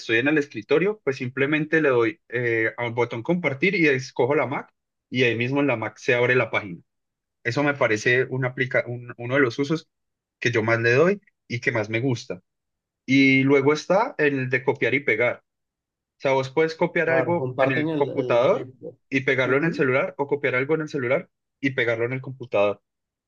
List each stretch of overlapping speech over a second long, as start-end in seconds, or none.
17.1-18.7